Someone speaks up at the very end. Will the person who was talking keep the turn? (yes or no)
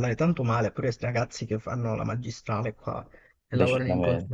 yes